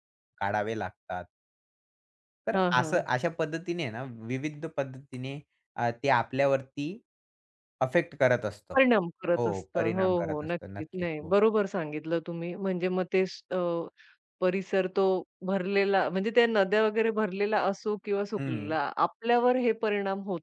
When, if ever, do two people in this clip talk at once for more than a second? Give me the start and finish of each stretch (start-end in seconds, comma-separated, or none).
9.4-11.3